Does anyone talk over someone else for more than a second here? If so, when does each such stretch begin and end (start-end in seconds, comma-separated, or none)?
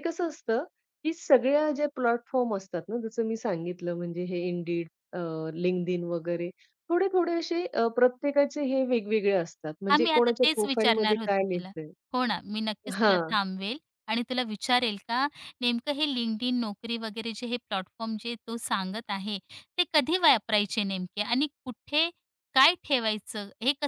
9.9-11.7